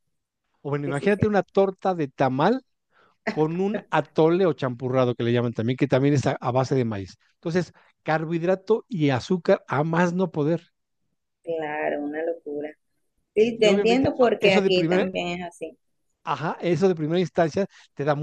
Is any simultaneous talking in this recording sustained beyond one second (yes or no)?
yes